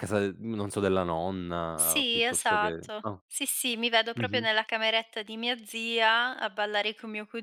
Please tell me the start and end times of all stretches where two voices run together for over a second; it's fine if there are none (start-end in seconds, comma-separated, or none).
1.8-3.2